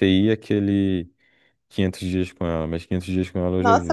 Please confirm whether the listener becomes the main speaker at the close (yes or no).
yes